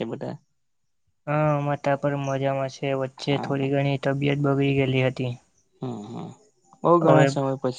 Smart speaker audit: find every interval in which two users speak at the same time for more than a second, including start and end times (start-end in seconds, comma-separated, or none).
none